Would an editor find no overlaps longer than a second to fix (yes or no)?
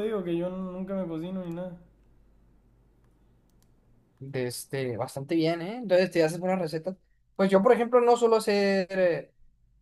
yes